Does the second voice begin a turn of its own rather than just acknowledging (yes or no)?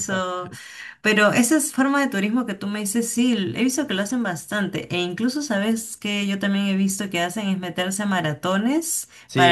yes